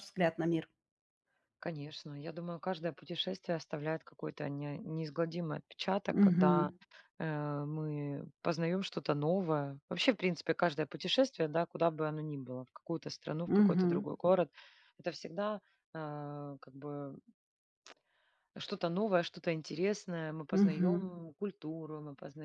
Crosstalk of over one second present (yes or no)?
no